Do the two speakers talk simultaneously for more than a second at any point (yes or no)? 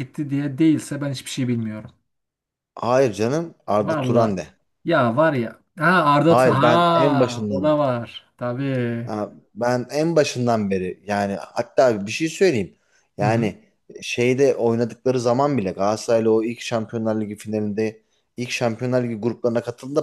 yes